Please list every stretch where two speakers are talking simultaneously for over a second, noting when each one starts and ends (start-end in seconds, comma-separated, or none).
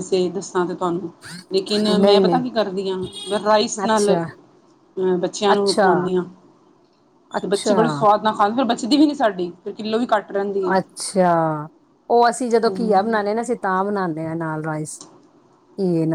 none